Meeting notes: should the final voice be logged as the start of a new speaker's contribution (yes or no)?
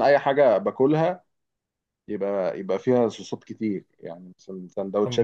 yes